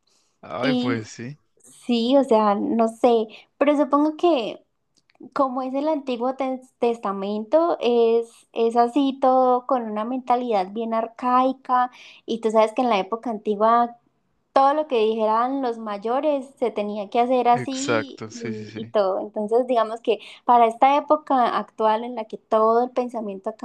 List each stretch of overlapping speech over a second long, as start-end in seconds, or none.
17.5-18.9